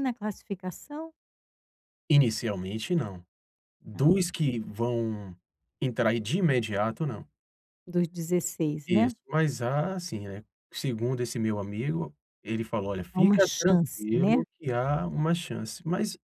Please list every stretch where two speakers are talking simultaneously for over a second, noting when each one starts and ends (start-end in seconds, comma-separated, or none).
13.1-14.4